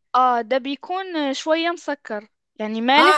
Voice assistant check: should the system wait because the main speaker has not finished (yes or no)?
no